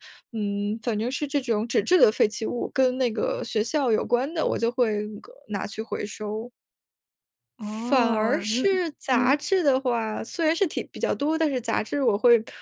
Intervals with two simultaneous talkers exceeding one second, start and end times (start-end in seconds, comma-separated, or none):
7.6-9.4